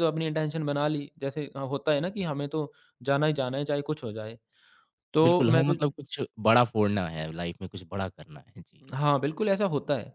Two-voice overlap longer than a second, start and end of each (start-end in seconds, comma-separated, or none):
none